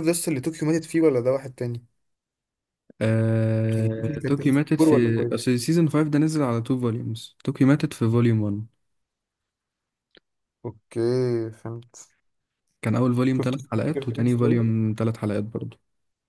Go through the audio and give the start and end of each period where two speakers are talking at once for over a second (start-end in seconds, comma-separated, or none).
3.8-5.3, 13.4-14.7